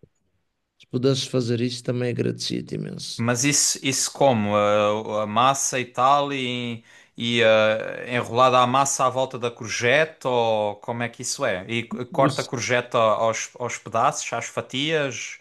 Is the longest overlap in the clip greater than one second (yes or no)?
no